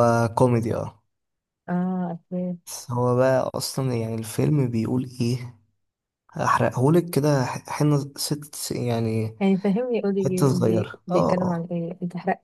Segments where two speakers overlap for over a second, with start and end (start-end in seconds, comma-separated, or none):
10.2-11.7